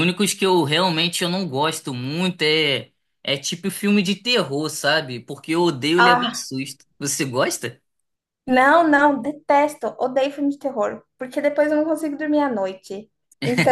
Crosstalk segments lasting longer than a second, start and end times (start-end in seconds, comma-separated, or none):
none